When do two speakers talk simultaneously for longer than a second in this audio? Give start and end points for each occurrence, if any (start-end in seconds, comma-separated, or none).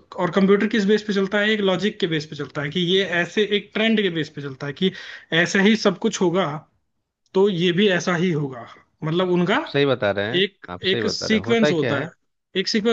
10.4-12.1